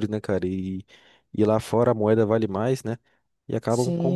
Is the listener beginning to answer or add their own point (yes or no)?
yes